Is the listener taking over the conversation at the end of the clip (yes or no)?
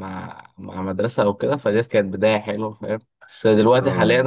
no